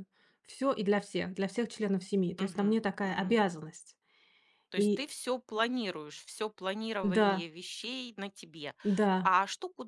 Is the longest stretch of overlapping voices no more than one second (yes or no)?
yes